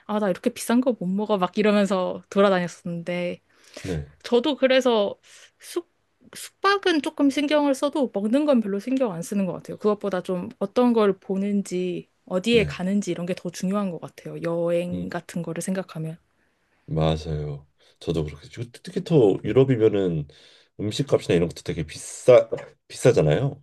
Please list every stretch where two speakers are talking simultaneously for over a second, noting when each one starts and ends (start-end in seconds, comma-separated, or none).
none